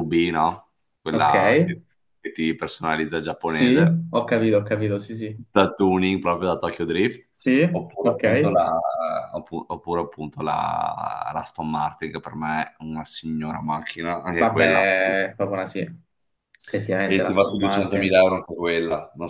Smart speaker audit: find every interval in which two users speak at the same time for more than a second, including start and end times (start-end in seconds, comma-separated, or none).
17.0-18.2